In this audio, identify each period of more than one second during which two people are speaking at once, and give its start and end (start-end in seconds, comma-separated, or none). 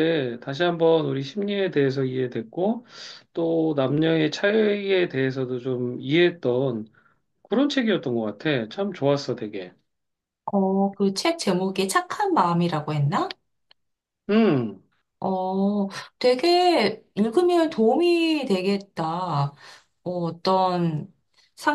none